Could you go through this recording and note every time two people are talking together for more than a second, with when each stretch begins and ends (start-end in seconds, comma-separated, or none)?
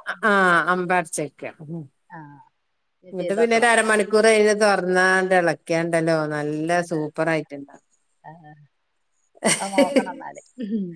none